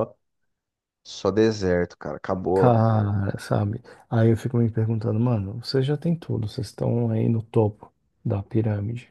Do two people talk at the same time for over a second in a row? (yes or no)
no